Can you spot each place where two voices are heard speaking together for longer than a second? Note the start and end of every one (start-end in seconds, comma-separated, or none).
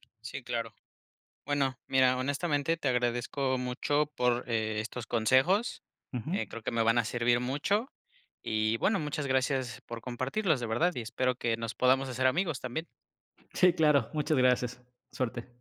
none